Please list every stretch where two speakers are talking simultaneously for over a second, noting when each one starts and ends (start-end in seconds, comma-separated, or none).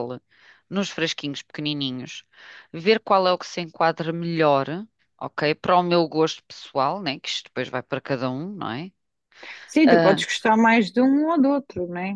none